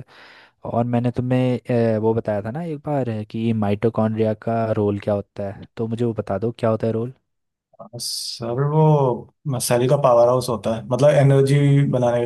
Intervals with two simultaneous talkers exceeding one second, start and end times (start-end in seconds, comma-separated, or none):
none